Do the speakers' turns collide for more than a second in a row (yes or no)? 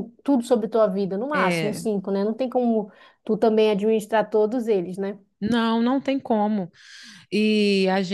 no